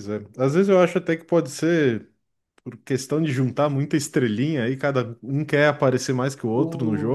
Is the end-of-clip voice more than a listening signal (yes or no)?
no